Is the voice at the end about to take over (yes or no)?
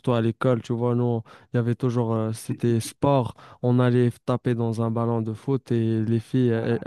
no